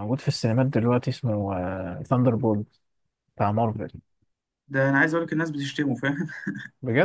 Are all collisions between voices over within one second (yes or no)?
yes